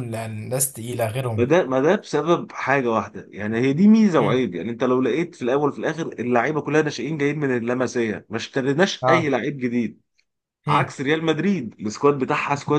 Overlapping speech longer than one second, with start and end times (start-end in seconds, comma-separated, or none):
none